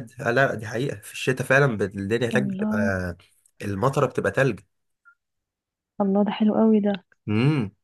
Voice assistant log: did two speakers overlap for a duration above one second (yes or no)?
no